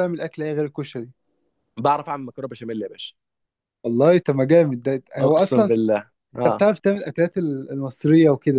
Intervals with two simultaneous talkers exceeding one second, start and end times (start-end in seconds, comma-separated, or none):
none